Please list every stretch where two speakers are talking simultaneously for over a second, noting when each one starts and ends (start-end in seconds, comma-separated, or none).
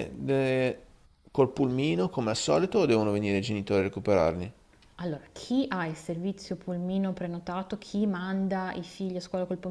none